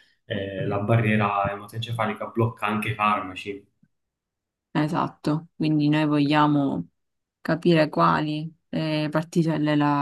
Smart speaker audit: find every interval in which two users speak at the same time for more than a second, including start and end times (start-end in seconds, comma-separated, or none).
none